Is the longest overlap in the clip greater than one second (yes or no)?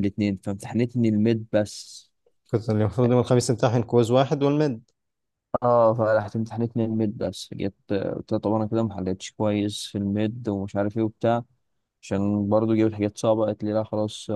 no